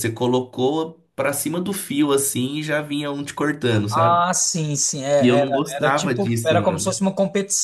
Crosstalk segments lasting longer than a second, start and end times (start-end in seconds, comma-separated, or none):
5.2-6.9